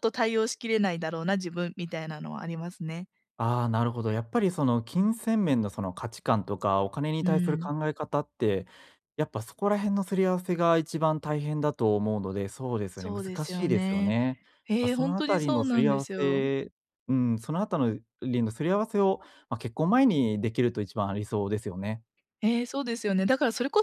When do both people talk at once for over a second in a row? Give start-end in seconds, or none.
12.9-14.2, 14.8-16.4